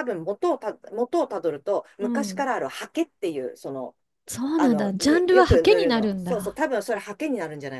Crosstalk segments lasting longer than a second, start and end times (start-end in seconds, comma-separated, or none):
4.5-6.6